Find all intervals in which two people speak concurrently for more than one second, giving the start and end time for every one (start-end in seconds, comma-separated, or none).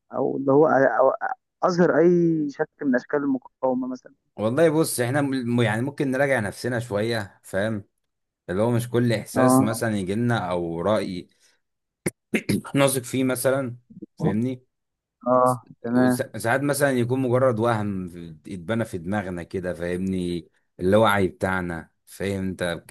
none